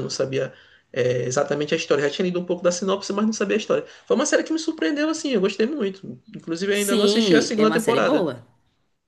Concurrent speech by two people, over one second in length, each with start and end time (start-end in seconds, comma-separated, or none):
6.7-8.3